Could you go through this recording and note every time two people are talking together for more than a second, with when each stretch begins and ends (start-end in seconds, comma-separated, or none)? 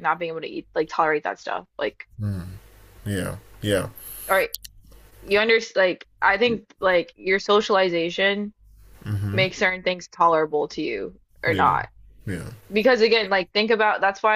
none